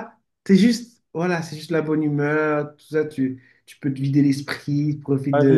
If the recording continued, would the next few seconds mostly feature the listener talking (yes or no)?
yes